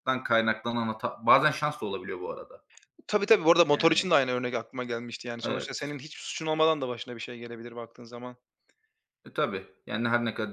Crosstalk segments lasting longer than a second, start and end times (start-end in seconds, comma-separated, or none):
none